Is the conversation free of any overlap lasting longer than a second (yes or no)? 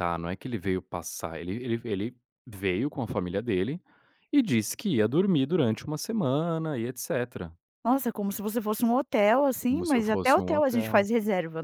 no